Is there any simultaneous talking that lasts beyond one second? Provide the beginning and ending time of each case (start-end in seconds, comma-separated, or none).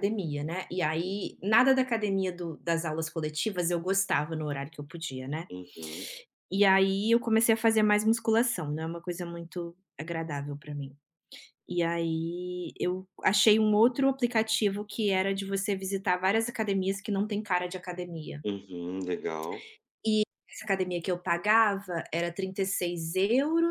none